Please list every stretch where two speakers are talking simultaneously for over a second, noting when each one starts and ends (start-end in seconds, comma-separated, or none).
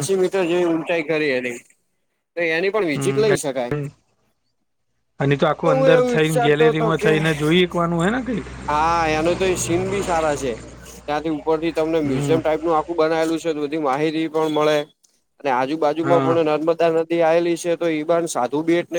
5.8-7.2